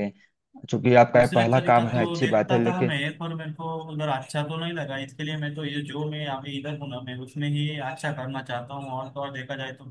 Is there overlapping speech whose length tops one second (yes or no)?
yes